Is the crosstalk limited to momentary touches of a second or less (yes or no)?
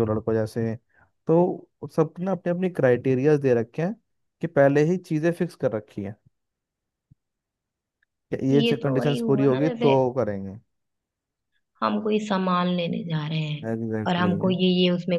no